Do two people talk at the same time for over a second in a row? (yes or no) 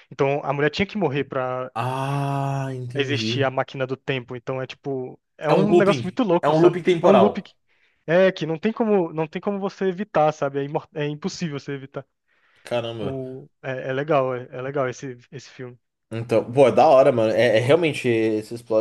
yes